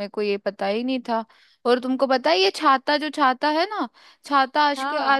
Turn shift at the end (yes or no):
no